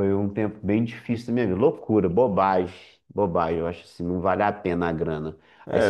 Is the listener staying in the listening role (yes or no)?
yes